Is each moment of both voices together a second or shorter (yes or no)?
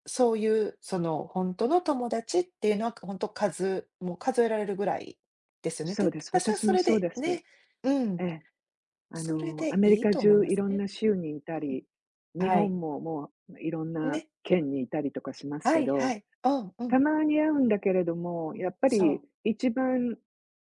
no